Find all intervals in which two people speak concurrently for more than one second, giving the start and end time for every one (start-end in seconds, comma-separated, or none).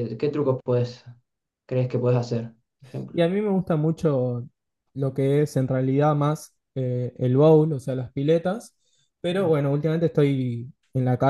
none